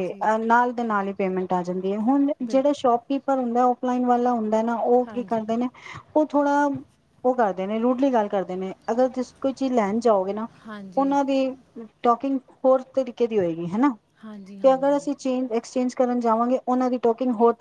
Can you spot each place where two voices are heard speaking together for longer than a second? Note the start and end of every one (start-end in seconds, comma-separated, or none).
none